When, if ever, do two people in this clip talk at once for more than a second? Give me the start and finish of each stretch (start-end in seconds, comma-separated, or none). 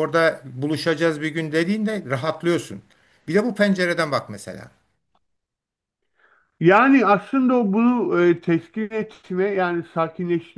none